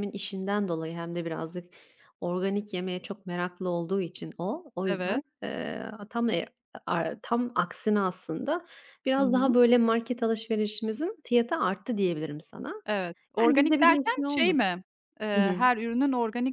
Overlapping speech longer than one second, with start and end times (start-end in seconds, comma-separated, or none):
13.4-14.6